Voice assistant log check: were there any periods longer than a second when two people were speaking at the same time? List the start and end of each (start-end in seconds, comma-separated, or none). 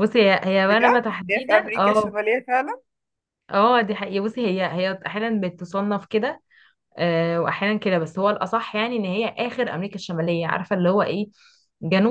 0.7-2.1